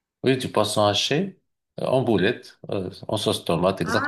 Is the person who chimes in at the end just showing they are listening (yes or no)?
no